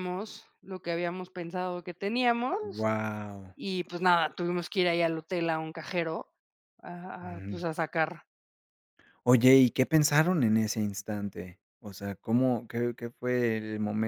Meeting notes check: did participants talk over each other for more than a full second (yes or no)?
no